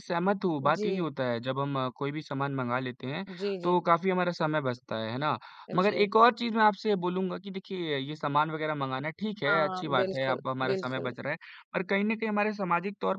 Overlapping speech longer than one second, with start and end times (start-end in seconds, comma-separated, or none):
9.5-11.1